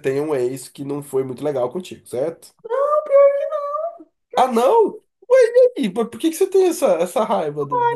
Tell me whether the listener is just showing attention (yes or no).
no